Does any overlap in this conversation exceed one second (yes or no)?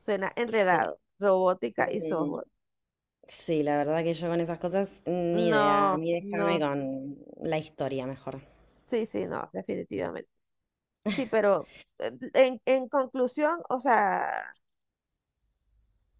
yes